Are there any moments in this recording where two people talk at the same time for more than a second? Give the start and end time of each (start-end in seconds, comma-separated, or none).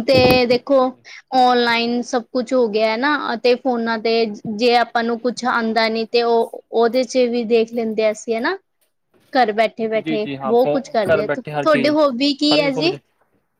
10.1-11.9